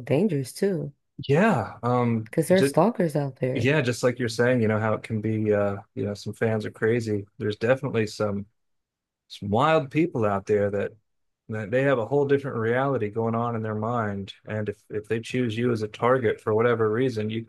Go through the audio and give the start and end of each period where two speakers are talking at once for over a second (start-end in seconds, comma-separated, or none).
none